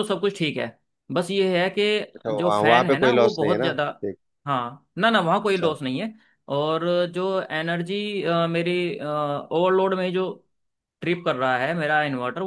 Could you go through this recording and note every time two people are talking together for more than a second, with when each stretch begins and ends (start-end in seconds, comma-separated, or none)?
2.4-3.8